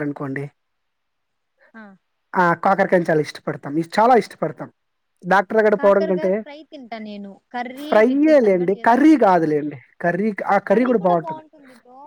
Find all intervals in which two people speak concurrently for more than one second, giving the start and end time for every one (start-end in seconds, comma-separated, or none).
7.9-9.8